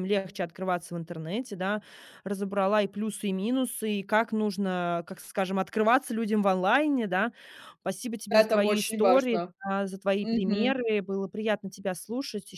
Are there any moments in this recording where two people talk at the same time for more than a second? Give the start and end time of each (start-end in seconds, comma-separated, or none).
8.3-9.5